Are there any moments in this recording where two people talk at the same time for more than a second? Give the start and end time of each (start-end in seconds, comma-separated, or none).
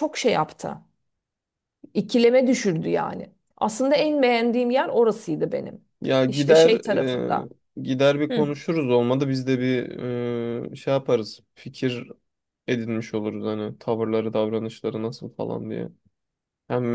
none